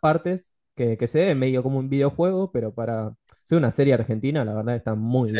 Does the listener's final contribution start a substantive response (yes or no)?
yes